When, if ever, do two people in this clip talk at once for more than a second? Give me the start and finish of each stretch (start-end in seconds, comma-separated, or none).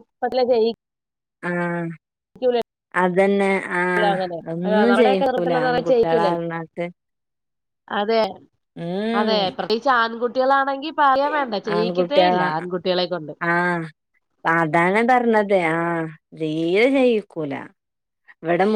4.9-6.4